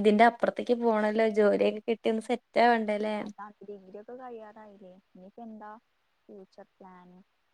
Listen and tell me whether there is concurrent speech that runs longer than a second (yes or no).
no